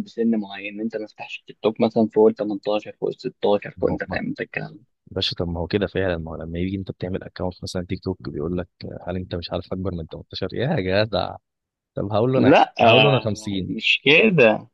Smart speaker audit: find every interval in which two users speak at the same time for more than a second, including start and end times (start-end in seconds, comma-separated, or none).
12.3-13.7